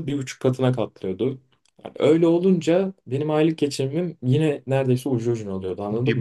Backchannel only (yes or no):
no